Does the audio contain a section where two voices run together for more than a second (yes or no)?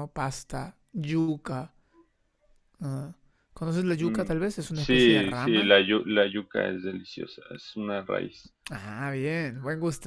yes